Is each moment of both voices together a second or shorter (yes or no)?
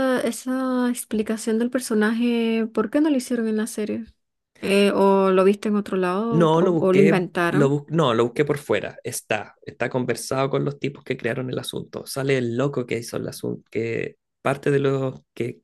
no